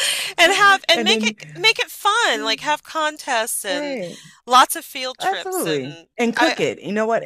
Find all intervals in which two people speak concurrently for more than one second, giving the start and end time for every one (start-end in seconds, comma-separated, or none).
5.2-6.6